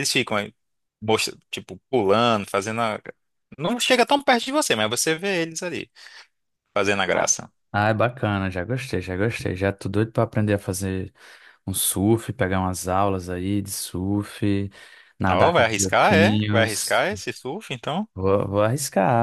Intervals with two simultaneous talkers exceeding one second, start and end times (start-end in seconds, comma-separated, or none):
15.3-17.1